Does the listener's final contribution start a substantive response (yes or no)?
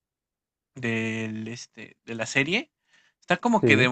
no